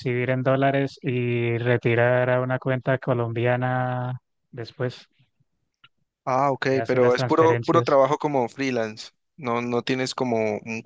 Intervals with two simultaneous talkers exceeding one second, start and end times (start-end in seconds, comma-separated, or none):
6.7-8.0